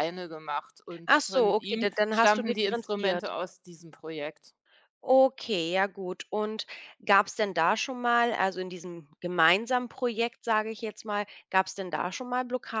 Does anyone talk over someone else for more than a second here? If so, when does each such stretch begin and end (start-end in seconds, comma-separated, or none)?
1.1-3.3